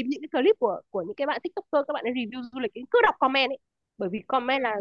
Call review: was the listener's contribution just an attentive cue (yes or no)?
yes